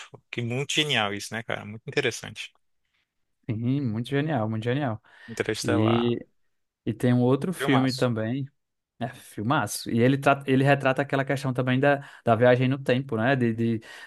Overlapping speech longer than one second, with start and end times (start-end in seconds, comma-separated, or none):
none